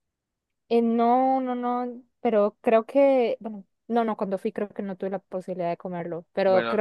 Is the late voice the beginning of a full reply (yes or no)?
no